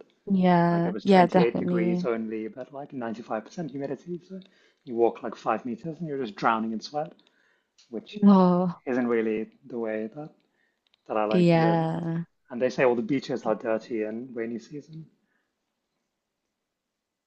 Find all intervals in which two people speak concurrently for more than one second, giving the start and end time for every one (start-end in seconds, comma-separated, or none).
0.7-2.0